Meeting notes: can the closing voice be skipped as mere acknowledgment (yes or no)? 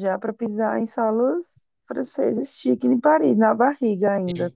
no